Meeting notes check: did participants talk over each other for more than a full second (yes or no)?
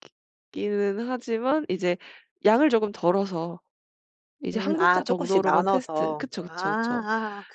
yes